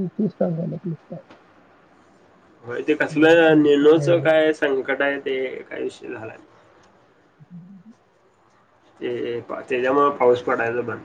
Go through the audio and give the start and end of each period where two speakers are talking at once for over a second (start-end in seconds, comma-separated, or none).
3.2-4.5